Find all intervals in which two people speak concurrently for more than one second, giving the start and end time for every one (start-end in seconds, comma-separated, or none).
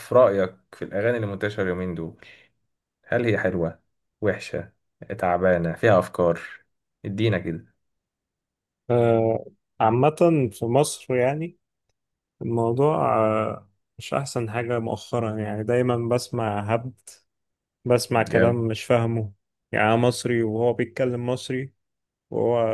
none